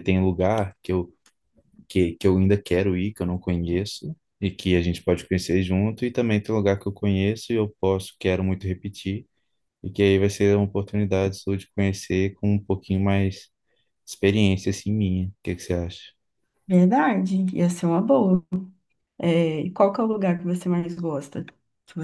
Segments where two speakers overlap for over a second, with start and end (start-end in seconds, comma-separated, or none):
none